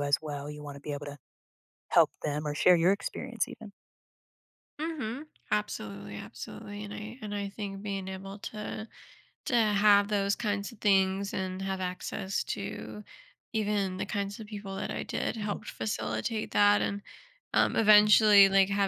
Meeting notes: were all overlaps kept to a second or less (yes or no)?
yes